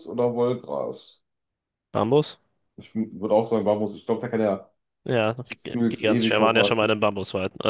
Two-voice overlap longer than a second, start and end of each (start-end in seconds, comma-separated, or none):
5.5-6.9